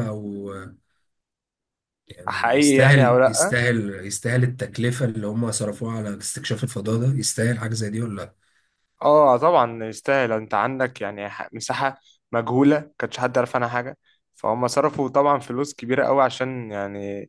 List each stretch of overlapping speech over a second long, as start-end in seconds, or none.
2.3-3.5